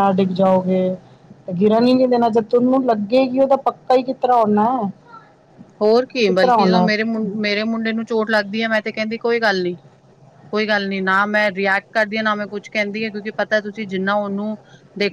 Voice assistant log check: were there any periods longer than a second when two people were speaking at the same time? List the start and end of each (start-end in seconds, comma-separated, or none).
none